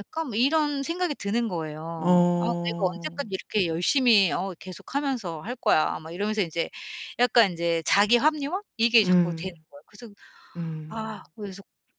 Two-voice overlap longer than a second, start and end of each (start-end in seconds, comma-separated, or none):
2.0-3.3